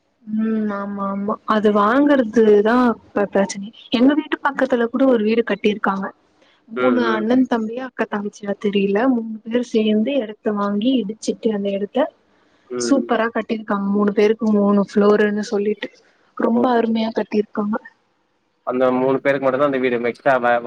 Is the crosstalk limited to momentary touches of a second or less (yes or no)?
yes